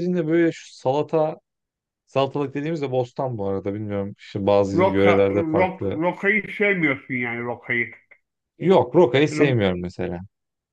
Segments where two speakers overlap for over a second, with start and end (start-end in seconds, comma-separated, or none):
4.7-6.0